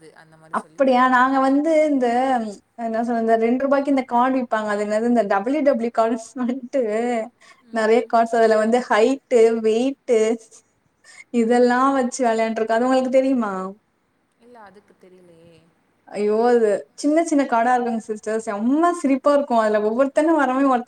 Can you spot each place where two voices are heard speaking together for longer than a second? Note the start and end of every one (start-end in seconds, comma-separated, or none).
none